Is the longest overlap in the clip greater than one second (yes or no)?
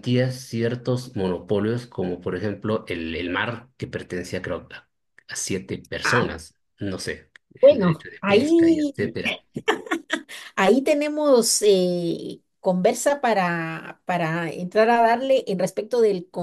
yes